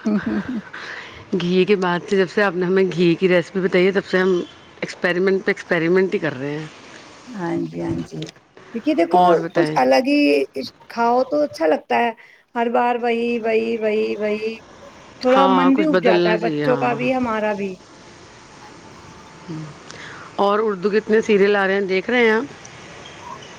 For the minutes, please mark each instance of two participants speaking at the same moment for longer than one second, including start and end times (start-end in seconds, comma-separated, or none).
15.3-17.0